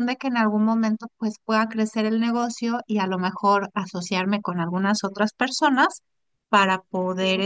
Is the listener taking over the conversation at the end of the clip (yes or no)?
no